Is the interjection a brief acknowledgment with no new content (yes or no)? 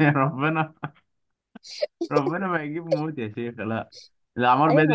no